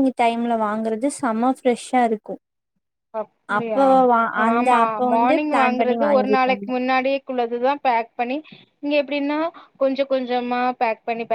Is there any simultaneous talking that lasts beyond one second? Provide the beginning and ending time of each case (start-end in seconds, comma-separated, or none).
4.5-6.7